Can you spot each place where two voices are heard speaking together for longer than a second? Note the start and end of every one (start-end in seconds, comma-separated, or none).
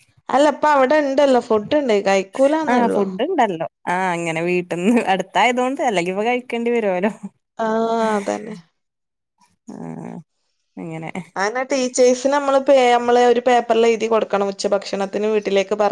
none